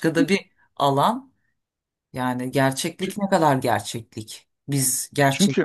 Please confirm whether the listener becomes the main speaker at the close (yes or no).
no